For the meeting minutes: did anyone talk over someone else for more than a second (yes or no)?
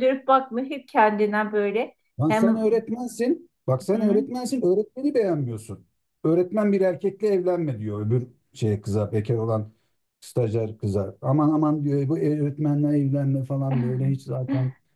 no